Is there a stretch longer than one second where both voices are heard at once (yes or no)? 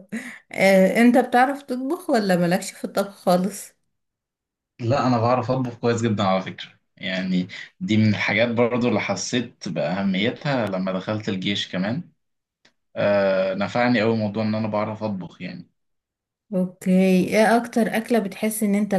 no